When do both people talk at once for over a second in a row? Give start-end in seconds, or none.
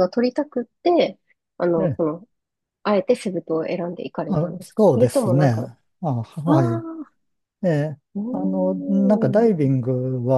4.3-5.6